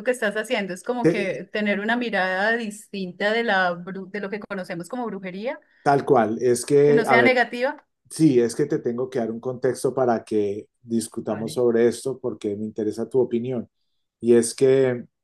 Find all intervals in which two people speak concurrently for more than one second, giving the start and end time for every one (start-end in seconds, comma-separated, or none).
none